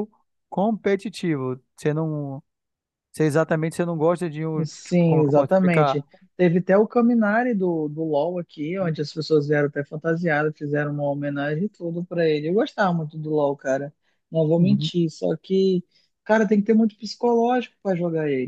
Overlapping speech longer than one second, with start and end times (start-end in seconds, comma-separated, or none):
4.6-6.0